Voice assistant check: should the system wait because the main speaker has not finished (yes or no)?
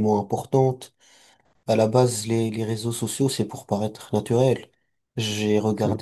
yes